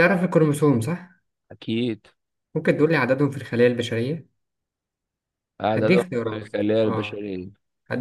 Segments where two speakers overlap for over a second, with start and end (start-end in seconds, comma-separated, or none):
5.7-7.2